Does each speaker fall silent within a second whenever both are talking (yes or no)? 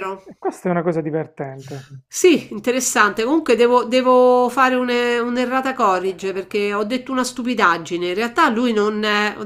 yes